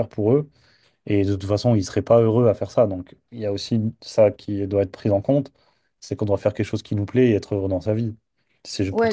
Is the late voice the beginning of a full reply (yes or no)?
no